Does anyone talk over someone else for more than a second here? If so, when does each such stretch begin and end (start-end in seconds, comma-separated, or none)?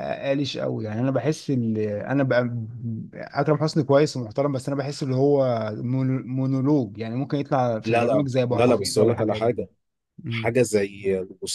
7.8-9.6